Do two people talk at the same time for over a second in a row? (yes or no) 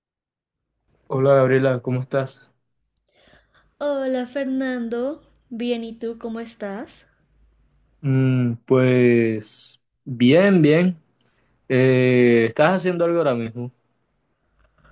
no